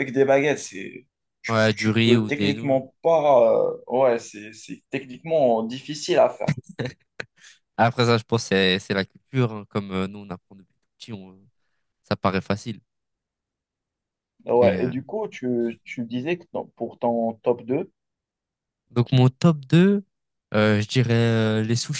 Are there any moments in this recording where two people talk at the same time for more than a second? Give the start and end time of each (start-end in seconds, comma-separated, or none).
1.5-2.8